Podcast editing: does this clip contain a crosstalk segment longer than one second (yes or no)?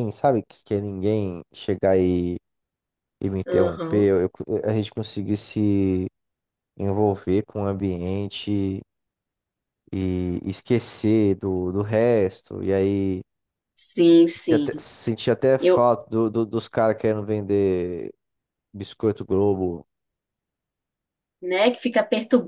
no